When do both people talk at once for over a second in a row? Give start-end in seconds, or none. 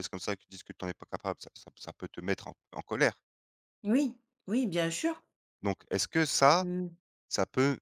none